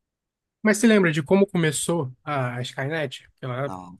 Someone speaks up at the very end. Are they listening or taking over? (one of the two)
listening